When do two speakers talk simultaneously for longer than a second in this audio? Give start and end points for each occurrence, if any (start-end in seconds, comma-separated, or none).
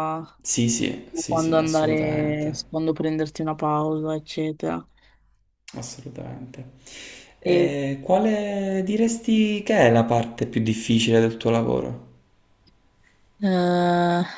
1.1-2.6